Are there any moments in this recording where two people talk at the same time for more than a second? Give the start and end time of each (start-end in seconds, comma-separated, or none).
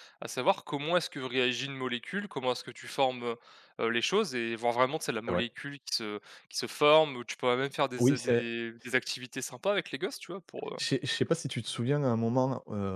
none